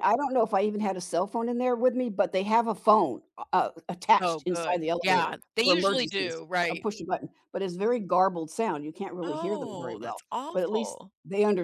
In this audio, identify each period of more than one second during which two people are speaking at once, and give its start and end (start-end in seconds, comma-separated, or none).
4.2-6.9, 9.2-11.1